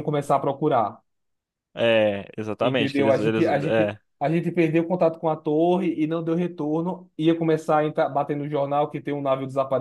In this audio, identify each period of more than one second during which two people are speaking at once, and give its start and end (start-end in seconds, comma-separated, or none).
2.6-4.0